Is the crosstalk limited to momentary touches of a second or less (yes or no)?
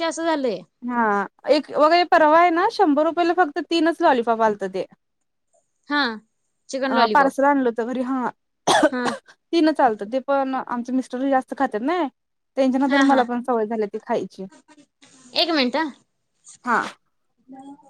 yes